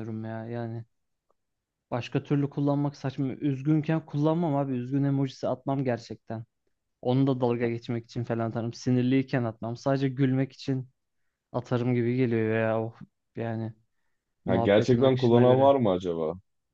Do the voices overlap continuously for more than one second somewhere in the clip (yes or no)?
yes